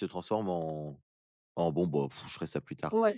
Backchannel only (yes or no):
no